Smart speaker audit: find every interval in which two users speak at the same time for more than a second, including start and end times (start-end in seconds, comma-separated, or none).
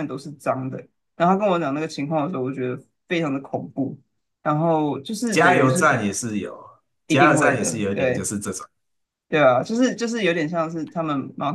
7.1-8.3